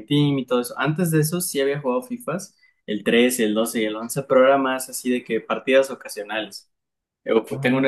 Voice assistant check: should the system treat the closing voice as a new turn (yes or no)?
no